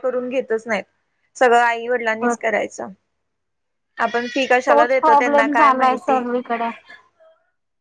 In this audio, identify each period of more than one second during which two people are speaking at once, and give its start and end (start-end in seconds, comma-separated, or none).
4.7-6.2